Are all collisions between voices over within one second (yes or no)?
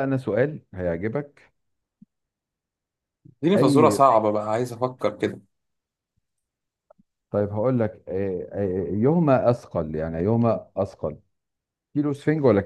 yes